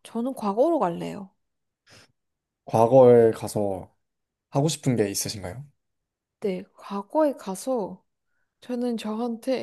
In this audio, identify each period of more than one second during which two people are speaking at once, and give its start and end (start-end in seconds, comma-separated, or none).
none